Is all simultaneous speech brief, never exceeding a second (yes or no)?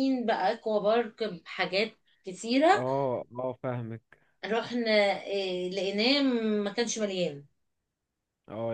yes